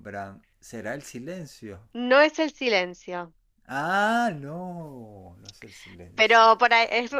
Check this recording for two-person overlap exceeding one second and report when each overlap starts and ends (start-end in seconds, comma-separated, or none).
none